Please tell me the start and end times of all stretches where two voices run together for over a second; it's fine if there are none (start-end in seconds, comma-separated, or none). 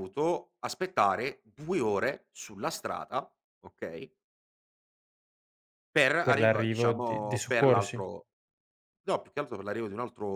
6.2-8.0